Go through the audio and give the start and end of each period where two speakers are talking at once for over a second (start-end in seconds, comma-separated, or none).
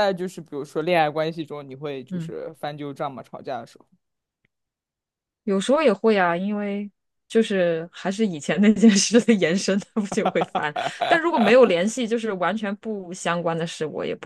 none